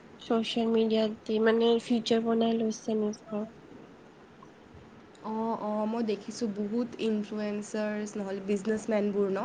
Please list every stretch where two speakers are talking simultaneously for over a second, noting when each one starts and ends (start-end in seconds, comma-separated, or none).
none